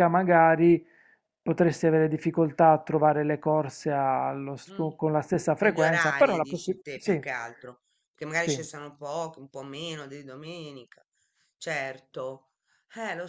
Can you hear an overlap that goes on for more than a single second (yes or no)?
yes